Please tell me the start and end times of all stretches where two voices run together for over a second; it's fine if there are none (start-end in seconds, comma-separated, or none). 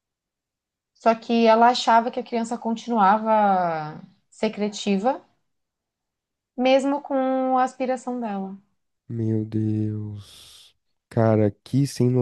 none